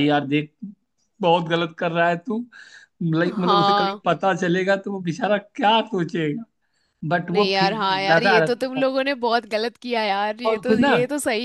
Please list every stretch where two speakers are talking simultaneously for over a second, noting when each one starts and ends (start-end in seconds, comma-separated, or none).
7.3-8.8